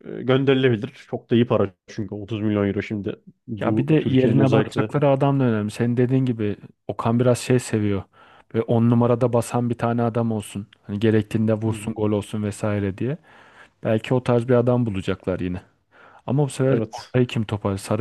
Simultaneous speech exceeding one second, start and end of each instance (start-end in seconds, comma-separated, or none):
3.6-4.9